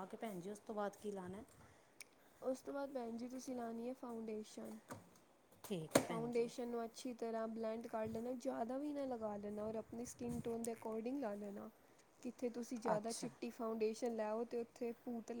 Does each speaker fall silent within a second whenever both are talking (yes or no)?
yes